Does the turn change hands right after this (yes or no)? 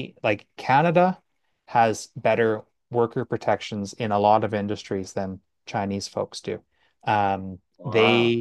no